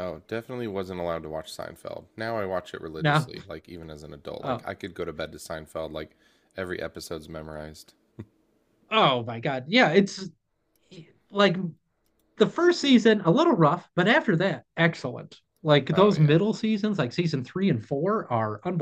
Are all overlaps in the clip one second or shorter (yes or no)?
yes